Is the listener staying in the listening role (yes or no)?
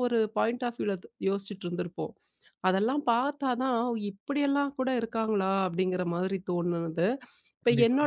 yes